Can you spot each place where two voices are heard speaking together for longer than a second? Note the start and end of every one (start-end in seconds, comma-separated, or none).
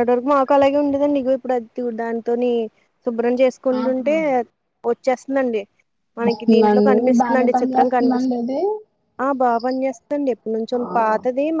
6.3-8.4